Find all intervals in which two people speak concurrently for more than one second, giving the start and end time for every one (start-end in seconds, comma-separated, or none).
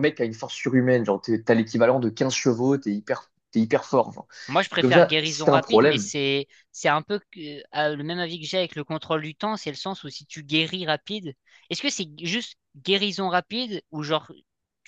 4.8-6.1